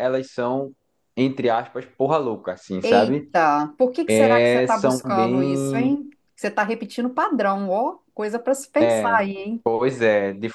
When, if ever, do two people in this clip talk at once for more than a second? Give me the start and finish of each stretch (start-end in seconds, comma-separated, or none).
4.2-5.9